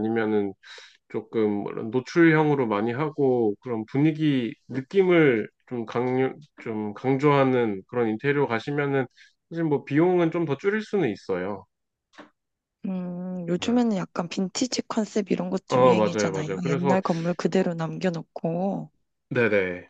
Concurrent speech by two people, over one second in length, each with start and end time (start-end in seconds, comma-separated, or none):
15.7-17.0